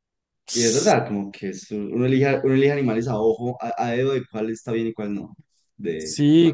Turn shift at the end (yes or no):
yes